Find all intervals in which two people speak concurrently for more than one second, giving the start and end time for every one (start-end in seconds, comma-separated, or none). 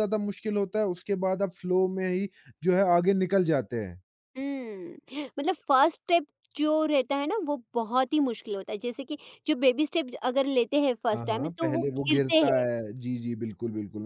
11.1-12.7